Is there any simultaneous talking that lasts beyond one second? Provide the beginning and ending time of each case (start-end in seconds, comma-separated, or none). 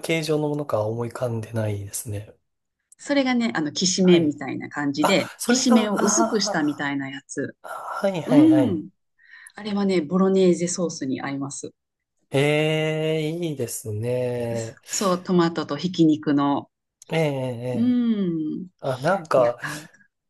5.0-6.9